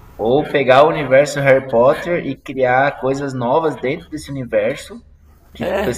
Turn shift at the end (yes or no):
no